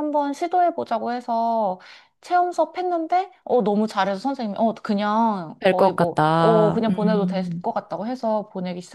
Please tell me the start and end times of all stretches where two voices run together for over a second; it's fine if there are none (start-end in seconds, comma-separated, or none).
5.6-7.6